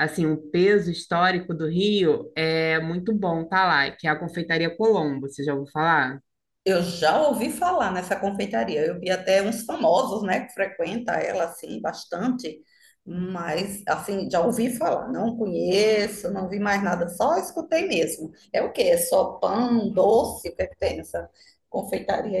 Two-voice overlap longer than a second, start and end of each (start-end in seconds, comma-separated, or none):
none